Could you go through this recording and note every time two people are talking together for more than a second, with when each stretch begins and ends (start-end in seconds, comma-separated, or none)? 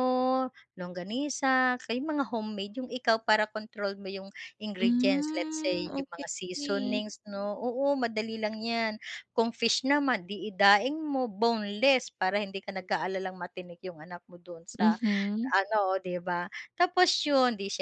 4.8-7.0